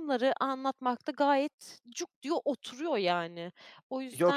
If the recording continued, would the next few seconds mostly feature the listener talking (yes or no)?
yes